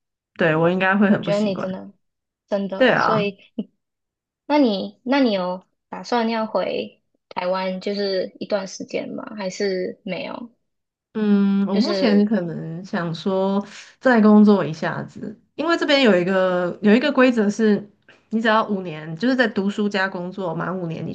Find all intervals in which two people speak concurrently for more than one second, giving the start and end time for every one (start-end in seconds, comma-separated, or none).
none